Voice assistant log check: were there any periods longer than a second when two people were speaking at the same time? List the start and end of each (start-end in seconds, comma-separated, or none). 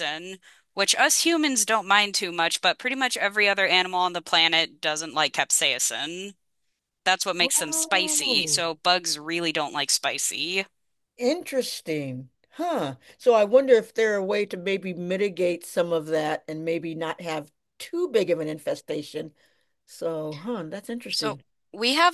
7.4-8.6